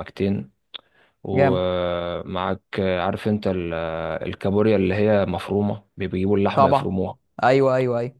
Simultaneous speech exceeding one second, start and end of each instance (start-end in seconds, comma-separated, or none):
none